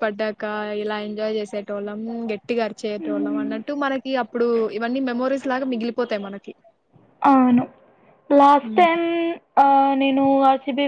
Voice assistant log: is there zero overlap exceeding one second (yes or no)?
yes